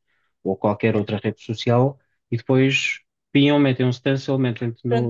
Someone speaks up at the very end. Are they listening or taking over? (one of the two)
taking over